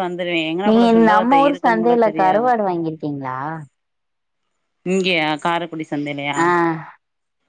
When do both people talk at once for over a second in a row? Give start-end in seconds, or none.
0.7-2.5